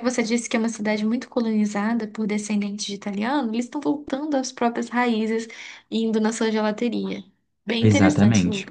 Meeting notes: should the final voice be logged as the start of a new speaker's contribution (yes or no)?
yes